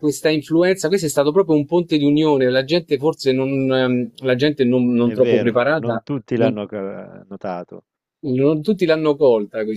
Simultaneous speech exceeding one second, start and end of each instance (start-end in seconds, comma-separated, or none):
5.0-6.5